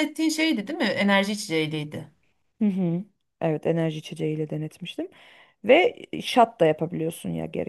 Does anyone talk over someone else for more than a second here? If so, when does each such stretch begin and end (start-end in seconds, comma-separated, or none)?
none